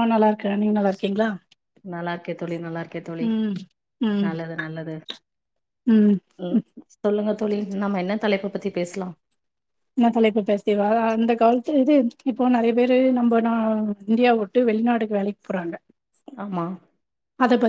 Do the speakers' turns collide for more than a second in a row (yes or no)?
no